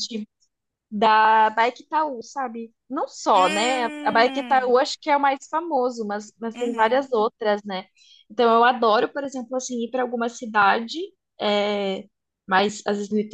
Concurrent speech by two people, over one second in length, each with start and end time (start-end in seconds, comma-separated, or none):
3.3-4.8